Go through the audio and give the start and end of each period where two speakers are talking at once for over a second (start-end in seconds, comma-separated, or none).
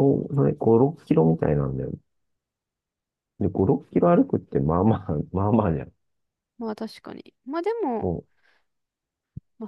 none